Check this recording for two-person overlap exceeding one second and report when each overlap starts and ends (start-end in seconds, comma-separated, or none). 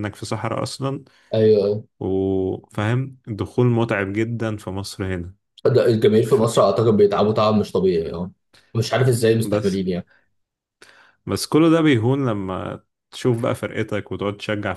none